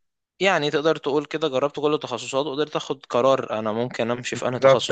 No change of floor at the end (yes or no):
no